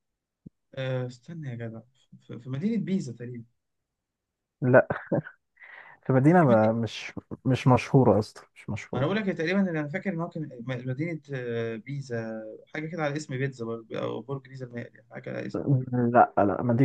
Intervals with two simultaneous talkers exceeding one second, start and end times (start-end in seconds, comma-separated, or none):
none